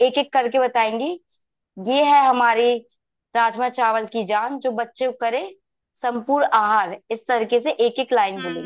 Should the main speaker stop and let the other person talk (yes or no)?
yes